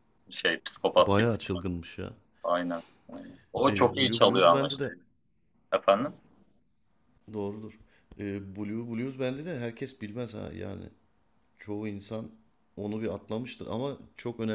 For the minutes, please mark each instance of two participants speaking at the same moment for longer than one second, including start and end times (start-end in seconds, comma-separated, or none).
3.7-4.9